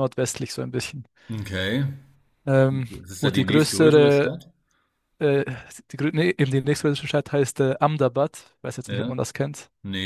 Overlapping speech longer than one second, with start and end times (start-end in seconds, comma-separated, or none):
2.9-4.3